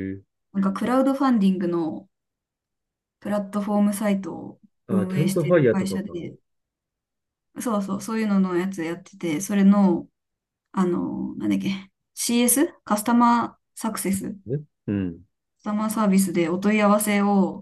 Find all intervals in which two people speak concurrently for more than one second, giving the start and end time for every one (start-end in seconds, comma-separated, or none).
4.9-6.2